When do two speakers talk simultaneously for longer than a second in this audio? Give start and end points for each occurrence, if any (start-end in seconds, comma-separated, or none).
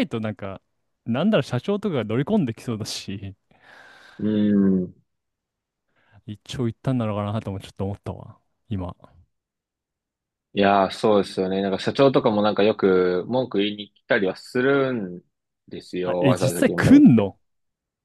16.0-17.3